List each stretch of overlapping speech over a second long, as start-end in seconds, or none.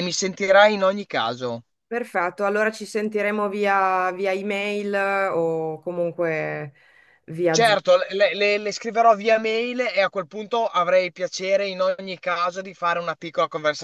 none